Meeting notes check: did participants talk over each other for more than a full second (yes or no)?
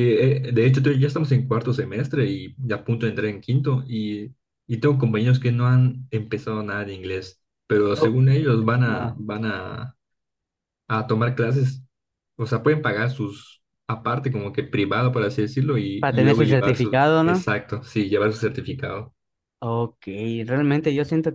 yes